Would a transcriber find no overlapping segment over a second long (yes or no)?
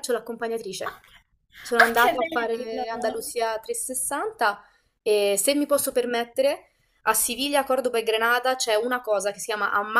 no